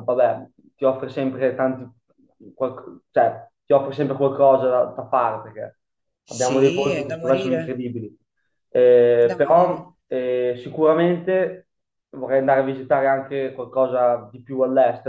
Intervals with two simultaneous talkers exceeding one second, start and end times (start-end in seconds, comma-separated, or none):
6.3-7.9